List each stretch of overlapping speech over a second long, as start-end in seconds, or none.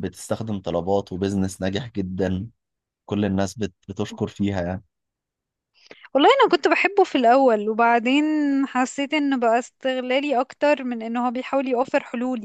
none